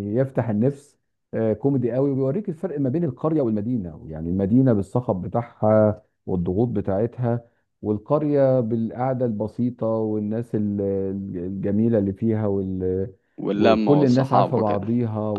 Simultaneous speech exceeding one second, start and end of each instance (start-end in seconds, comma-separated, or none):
13.5-14.9